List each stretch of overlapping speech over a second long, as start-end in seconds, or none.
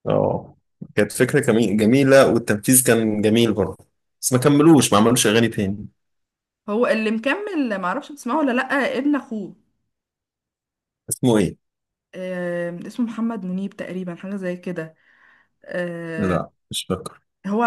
none